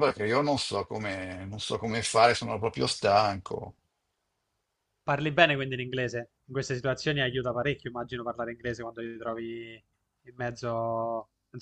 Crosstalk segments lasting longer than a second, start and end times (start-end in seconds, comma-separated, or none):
none